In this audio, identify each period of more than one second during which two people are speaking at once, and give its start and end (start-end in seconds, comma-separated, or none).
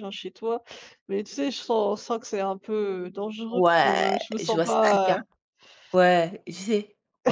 3.5-5.2